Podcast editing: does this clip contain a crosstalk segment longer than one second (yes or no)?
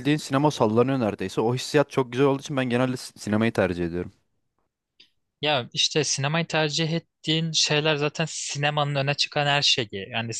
no